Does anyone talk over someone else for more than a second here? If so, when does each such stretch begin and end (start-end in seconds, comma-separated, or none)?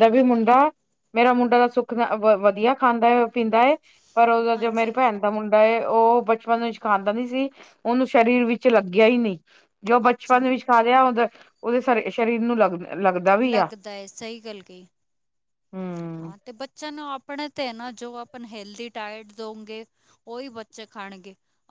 none